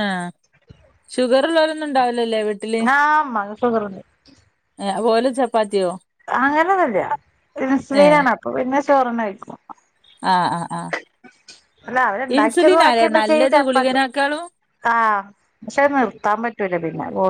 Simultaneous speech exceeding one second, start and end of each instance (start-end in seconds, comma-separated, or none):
12.4-14.0